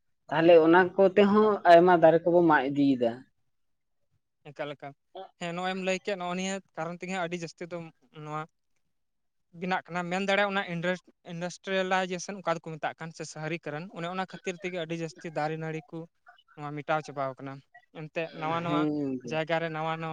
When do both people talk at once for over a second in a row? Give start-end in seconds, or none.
none